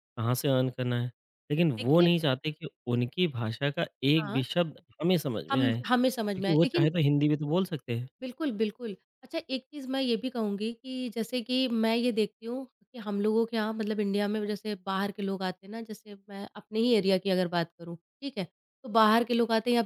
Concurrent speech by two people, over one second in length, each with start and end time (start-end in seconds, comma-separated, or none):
5.5-6.9